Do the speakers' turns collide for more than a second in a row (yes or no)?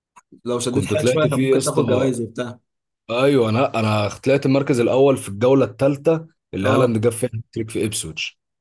yes